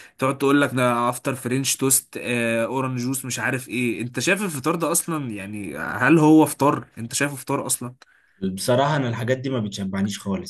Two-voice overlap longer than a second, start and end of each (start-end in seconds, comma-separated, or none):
none